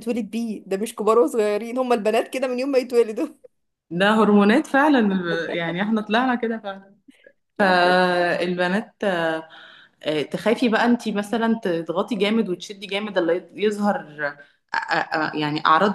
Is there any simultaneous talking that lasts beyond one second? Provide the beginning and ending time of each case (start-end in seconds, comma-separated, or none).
none